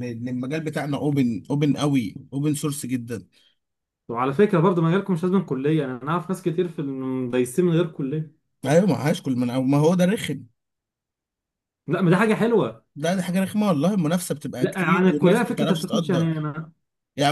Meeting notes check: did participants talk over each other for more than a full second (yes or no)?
yes